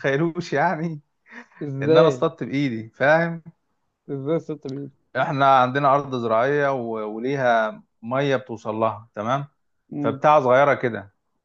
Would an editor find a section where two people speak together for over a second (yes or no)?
no